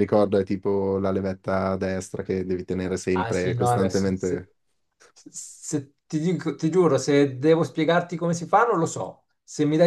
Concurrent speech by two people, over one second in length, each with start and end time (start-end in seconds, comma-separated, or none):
3.1-4.5